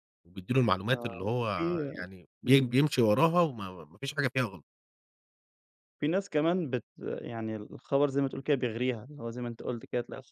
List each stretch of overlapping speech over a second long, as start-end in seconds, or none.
none